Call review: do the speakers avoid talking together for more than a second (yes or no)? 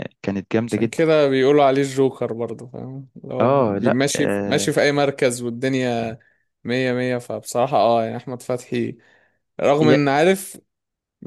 no